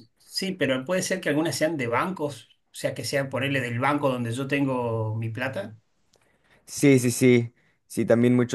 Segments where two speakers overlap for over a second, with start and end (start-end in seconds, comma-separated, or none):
none